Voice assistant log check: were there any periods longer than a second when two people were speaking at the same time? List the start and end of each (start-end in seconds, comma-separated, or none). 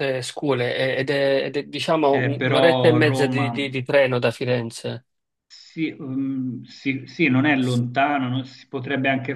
2.1-3.5